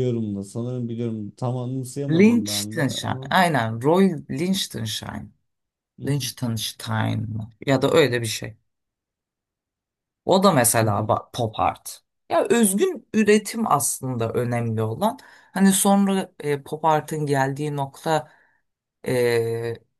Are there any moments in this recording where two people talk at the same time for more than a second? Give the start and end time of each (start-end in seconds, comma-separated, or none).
2.1-3.3